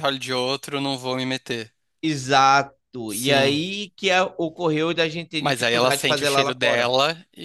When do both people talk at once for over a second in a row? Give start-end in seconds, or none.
5.4-6.9